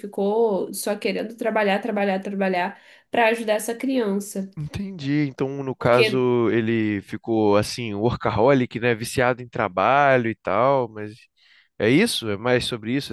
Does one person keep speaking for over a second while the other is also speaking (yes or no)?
no